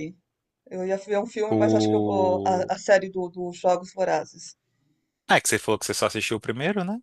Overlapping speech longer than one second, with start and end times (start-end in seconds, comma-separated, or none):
1.5-2.7